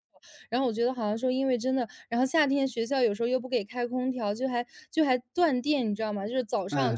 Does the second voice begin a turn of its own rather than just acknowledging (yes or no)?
no